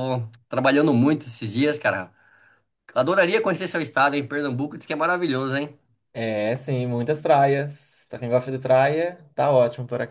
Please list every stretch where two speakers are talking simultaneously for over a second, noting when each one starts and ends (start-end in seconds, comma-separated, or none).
none